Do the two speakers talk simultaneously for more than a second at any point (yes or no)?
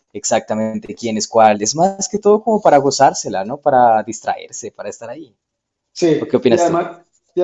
no